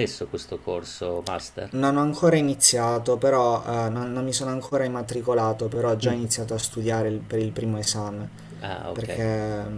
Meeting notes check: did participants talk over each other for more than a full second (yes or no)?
no